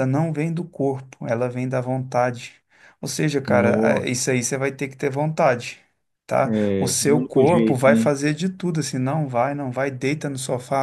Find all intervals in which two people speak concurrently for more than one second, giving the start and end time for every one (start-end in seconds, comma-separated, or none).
6.4-8.0